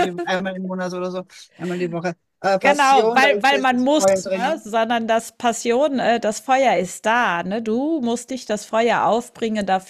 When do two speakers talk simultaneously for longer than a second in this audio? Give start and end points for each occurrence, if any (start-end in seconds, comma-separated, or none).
2.5-4.6